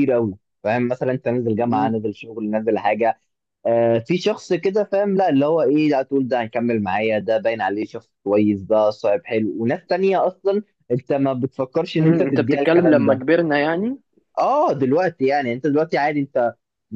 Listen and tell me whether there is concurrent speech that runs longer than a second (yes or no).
yes